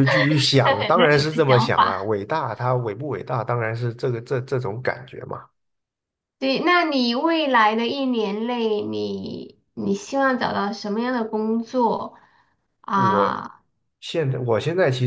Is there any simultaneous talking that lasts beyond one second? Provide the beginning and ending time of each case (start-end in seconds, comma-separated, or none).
0.6-1.9